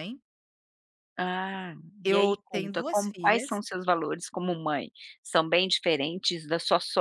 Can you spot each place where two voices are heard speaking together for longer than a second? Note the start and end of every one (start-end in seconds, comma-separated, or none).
2.0-3.6